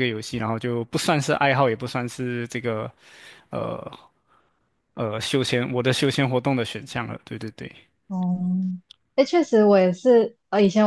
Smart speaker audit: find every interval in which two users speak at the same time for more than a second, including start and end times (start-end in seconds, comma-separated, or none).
none